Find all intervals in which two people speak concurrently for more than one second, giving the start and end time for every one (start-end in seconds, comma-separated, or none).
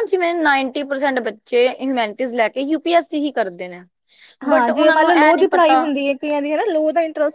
4.5-5.8